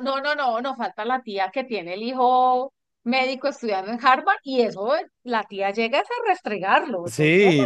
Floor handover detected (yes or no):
yes